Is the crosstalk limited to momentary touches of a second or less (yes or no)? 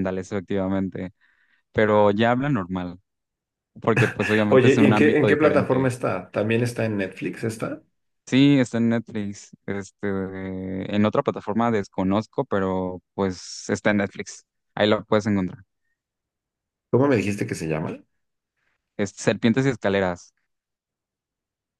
no